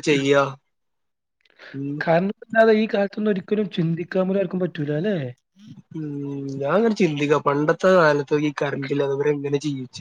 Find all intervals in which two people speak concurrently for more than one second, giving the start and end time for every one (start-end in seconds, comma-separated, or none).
none